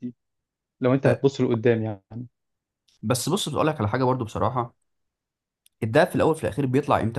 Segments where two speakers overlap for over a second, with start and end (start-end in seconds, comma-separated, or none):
none